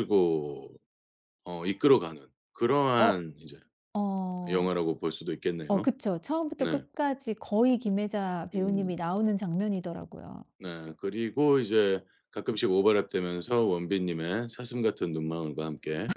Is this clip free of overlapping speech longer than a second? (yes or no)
yes